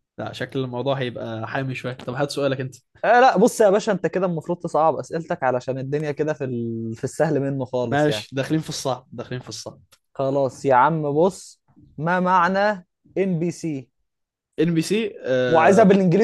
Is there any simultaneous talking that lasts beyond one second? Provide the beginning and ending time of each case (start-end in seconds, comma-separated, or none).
none